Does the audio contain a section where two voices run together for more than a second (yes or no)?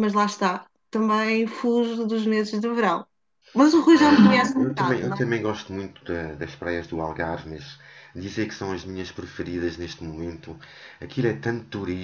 yes